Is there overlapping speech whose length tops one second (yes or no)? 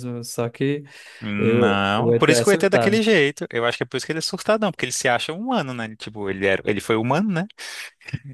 yes